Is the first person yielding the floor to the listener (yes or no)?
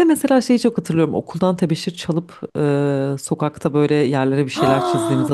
yes